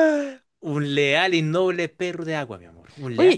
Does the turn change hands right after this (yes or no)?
yes